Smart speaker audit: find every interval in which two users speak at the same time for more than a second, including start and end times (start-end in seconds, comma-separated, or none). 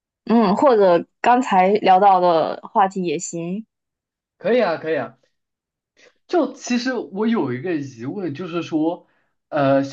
none